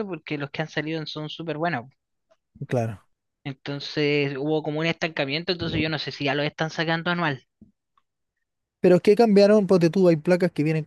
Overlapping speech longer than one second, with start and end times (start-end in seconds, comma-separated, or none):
none